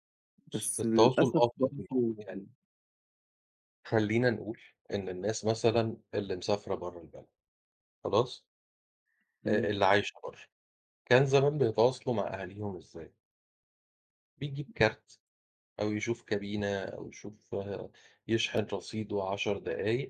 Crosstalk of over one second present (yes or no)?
yes